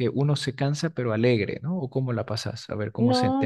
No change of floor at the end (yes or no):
no